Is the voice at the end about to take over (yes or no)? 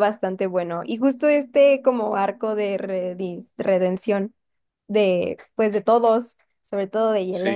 yes